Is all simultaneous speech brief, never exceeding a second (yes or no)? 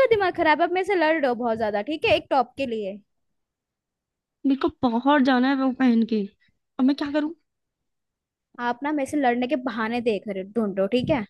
yes